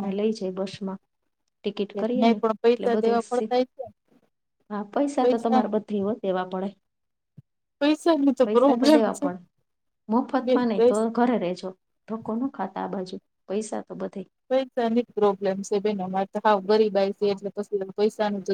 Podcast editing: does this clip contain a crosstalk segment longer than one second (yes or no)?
yes